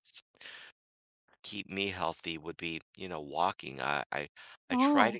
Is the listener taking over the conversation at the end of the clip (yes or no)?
no